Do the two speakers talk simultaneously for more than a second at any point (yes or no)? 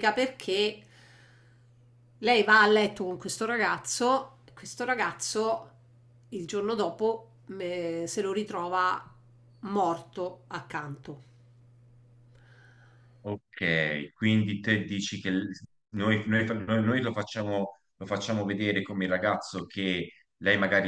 no